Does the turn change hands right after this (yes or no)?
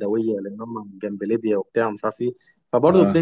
no